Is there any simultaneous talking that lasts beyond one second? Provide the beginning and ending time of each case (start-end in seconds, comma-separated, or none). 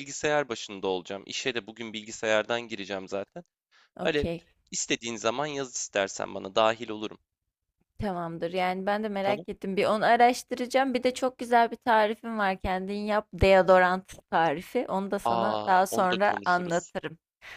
15.2-16.9